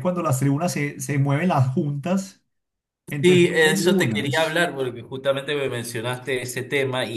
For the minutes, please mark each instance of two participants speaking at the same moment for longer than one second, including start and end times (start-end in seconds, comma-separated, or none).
3.2-4.6